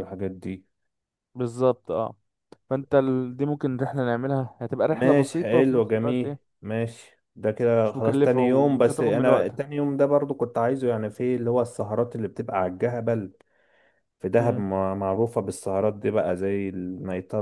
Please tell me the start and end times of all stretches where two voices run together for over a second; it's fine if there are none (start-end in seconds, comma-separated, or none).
4.9-6.5, 7.8-9.6